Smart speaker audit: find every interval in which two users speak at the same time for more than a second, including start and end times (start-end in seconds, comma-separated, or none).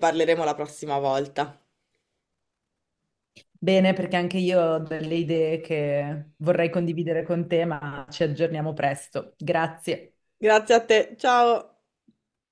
none